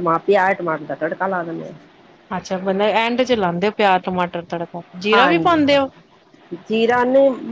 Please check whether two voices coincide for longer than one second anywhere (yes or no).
no